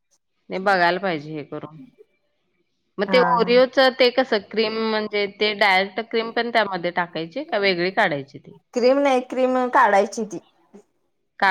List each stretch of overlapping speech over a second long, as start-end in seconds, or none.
none